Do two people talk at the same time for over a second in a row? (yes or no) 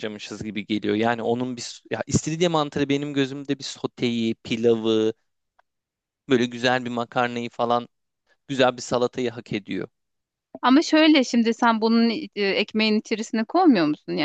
no